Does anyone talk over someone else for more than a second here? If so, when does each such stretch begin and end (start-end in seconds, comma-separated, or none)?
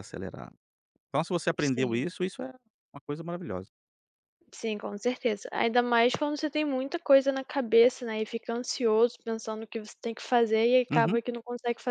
none